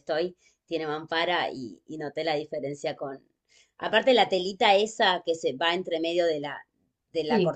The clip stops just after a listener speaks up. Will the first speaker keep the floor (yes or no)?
yes